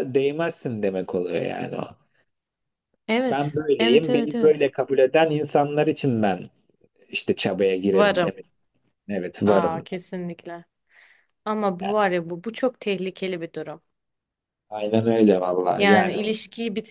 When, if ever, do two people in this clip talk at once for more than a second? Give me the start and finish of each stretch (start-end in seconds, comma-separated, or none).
3.3-4.7